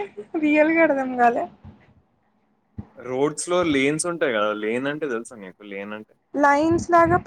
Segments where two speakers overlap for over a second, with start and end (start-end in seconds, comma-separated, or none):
none